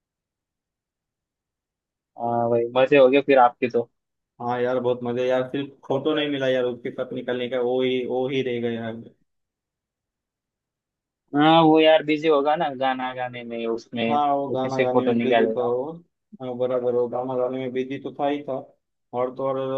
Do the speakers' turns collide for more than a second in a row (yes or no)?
yes